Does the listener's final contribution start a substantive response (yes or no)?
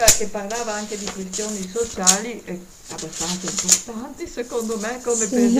no